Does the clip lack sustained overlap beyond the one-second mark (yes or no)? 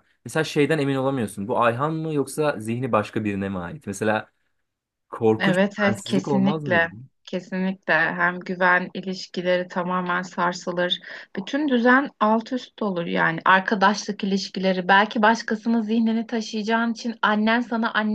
no